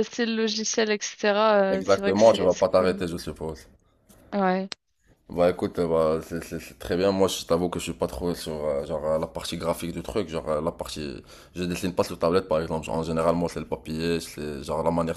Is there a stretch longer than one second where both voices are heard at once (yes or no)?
yes